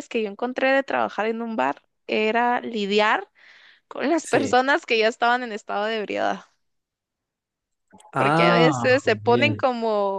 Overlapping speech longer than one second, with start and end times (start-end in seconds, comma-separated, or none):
8.1-9.6